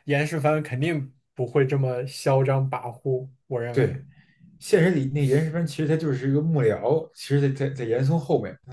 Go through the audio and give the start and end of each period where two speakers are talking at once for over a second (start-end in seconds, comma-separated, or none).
none